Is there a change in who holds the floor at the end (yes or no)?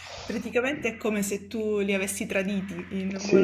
yes